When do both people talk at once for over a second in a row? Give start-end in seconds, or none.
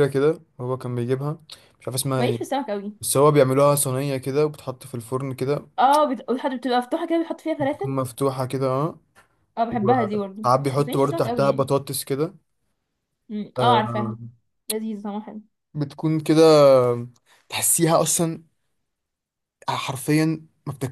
9.7-11.7